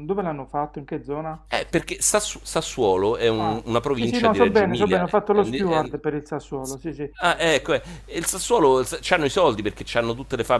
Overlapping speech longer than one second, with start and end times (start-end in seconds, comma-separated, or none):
3.3-6.0